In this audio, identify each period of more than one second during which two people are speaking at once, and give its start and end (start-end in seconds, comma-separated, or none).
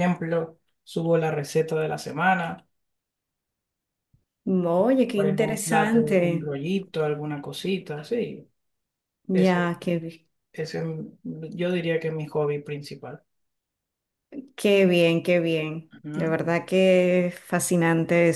5.1-6.5